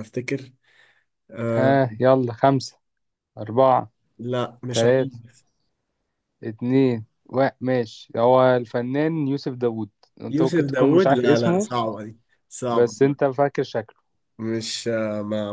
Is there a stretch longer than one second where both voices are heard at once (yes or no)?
yes